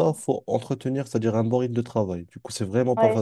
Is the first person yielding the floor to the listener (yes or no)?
yes